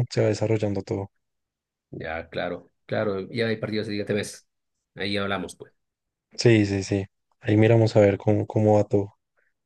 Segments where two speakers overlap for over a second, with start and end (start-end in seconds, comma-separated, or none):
none